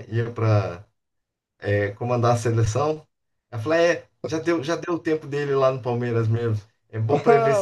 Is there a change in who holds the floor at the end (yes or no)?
yes